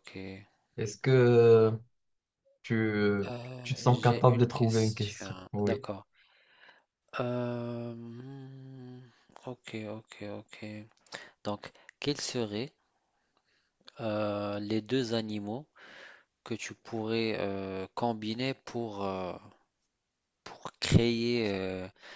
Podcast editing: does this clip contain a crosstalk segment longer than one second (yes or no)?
yes